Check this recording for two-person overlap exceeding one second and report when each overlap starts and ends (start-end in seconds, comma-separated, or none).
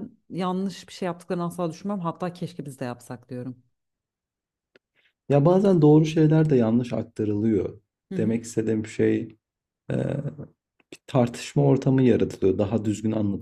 none